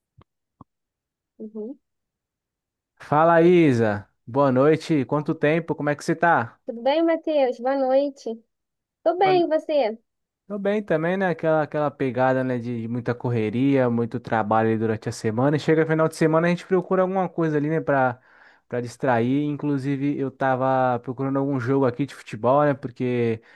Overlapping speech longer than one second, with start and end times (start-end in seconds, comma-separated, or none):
none